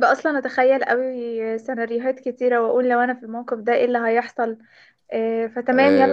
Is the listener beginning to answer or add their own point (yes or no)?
yes